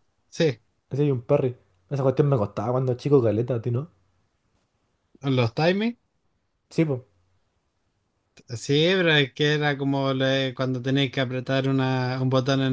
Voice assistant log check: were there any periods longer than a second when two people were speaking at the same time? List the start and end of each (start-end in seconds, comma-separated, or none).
none